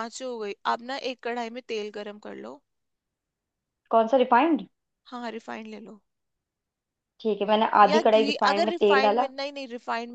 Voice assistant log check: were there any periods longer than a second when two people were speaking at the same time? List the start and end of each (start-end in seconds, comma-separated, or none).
7.8-9.3